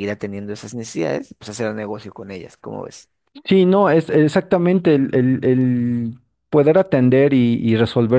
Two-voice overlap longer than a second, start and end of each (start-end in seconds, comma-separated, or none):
none